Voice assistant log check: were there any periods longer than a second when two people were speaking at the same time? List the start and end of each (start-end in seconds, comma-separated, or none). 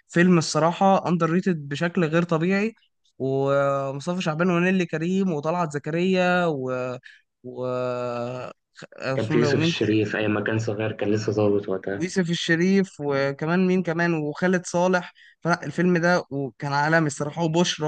none